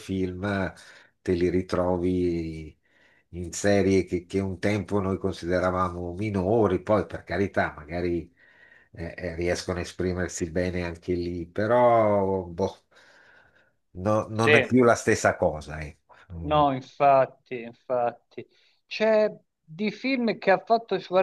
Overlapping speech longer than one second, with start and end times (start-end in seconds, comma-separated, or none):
none